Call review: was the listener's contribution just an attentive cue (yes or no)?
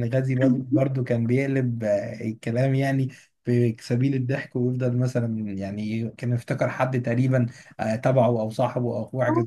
no